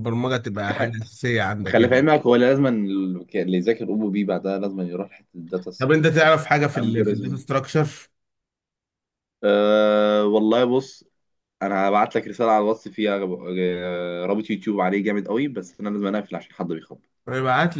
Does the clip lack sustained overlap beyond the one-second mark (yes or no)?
no